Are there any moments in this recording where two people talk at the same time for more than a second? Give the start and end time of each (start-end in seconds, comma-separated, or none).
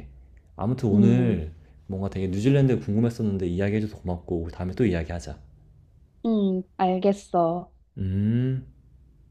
none